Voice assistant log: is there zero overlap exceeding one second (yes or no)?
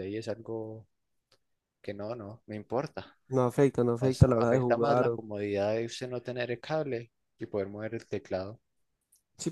no